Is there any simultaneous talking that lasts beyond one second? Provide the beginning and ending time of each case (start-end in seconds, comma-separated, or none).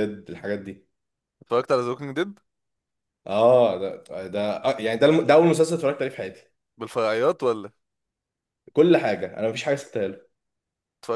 none